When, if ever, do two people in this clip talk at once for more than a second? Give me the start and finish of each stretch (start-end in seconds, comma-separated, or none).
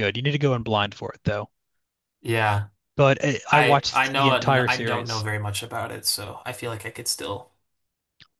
3.5-5.2